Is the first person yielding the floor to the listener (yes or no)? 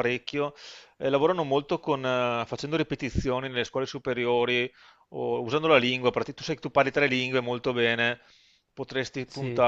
no